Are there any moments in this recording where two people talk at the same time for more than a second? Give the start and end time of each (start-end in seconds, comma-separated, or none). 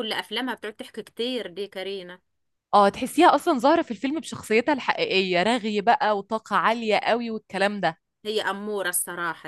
none